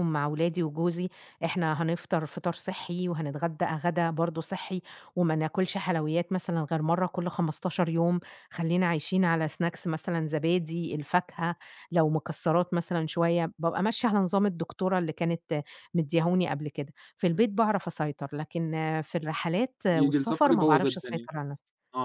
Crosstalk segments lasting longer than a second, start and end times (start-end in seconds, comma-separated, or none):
19.9-21.3